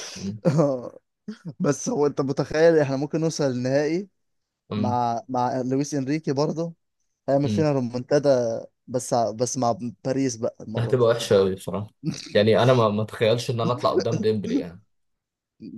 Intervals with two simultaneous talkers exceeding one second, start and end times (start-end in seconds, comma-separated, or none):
none